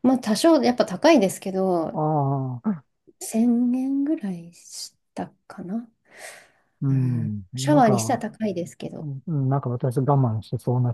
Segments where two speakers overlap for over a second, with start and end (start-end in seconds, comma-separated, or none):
6.9-8.2